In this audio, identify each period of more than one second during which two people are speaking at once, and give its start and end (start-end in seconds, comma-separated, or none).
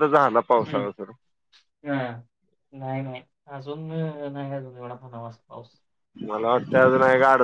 none